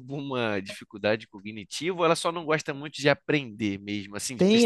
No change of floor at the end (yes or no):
no